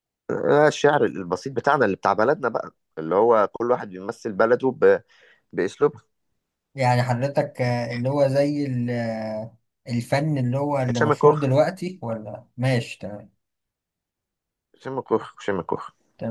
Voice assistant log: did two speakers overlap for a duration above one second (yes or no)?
no